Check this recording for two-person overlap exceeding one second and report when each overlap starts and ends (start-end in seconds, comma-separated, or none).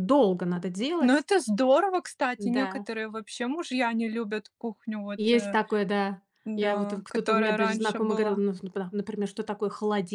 6.5-8.4